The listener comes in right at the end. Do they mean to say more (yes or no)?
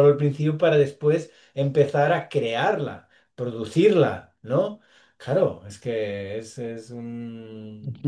yes